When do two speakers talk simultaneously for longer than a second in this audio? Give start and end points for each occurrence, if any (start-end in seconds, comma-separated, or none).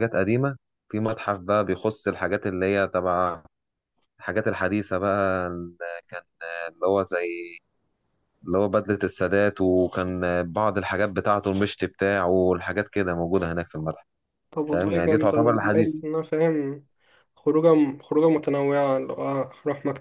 14.7-16.0